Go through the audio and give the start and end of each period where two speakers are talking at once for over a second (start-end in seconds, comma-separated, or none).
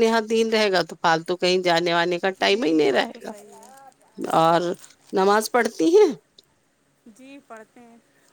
2.5-4.0